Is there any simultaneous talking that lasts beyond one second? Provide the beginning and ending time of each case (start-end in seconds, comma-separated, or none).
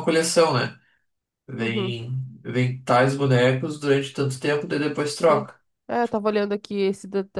none